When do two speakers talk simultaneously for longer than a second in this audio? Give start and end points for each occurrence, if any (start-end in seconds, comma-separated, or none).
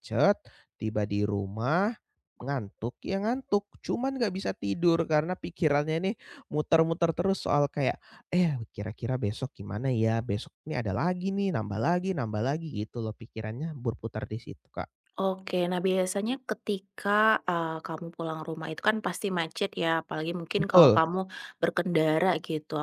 none